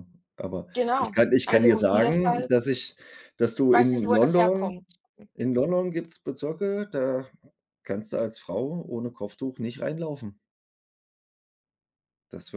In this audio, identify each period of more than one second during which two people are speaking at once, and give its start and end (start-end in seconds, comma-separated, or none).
0.7-2.5, 3.6-4.8